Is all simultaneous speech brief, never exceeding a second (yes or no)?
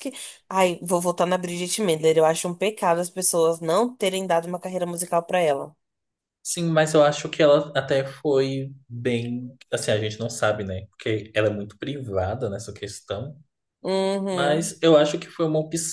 yes